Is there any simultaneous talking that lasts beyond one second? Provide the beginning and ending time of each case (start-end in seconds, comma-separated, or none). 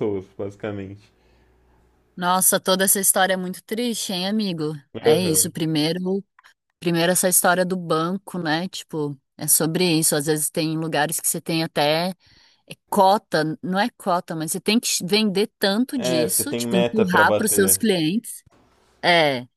15.9-17.8